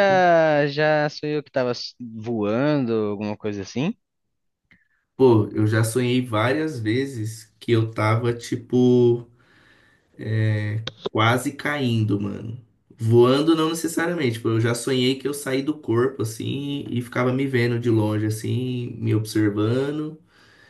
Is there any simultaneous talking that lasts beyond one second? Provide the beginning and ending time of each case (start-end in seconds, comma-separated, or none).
none